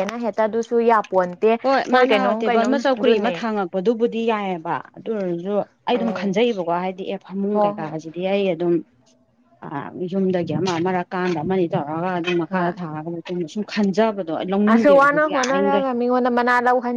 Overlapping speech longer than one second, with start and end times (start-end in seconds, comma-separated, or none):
2.1-3.4